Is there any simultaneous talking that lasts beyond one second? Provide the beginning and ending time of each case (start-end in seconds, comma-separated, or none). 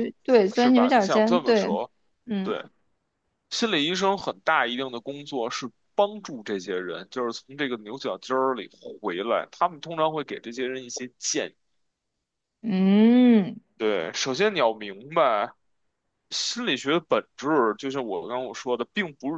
0.5-1.8